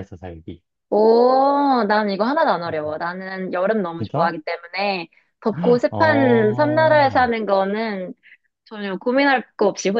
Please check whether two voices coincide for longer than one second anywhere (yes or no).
yes